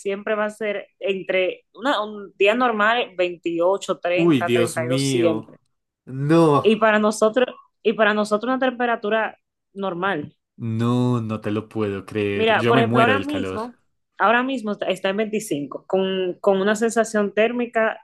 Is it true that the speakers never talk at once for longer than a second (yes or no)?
no